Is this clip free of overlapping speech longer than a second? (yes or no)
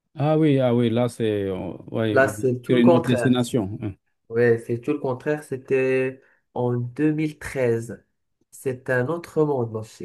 no